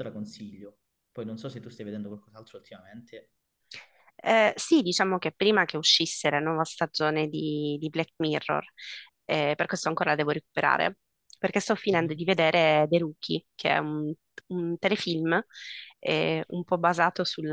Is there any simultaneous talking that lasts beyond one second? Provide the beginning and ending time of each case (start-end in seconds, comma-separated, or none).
none